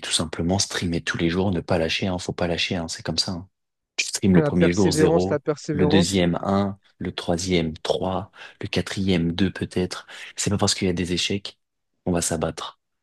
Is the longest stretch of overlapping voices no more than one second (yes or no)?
no